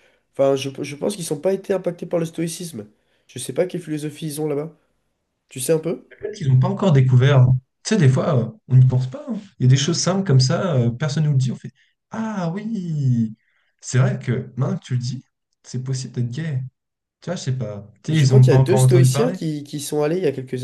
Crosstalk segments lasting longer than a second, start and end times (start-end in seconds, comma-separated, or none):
18.1-19.4